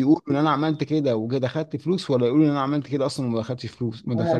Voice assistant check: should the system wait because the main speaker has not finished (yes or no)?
no